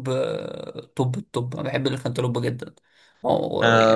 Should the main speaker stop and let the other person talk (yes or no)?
yes